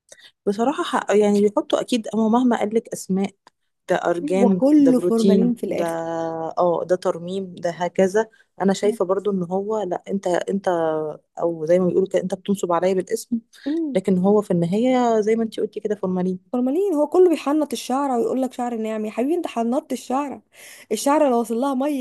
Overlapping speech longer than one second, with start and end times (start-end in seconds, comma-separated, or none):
4.4-5.8